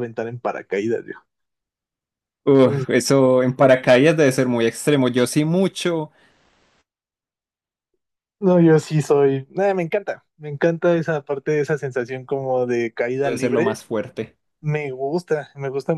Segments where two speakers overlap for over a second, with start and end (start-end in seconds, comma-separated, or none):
none